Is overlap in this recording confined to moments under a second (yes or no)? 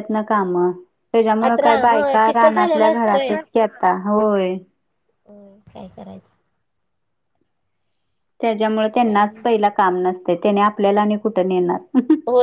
no